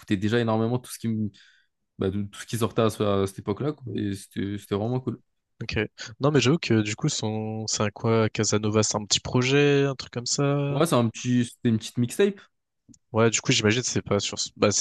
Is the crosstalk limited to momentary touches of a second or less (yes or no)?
yes